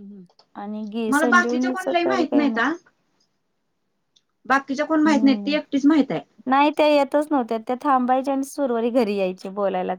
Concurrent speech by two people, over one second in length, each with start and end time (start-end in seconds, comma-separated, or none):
0.6-2.7